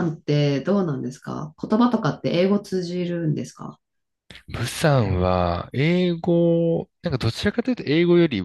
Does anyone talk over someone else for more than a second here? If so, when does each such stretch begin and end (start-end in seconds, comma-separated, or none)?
none